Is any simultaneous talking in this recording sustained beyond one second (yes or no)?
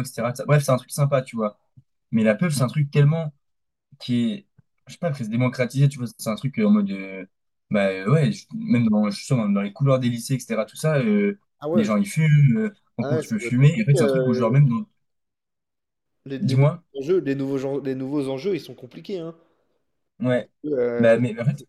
yes